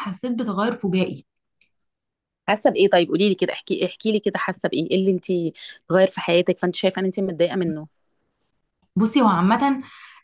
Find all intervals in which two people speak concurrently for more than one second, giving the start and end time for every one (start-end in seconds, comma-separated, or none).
none